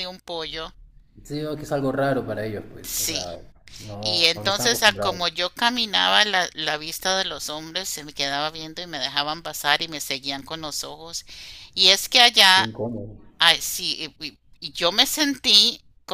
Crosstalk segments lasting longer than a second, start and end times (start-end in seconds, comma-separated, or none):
4.0-5.2